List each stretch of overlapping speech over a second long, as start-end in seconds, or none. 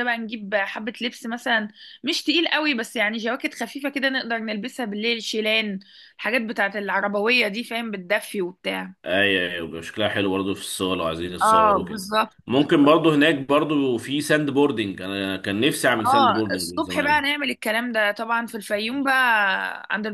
16.0-17.3